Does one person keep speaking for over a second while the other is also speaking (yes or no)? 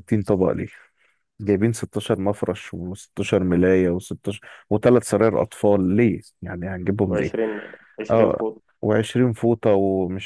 no